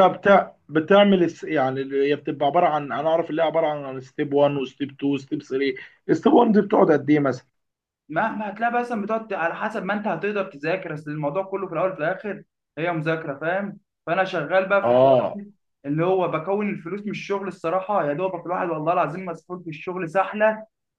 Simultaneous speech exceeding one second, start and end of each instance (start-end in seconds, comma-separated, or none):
none